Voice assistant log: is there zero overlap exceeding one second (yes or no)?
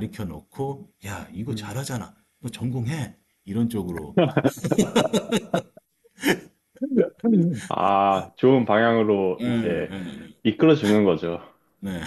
yes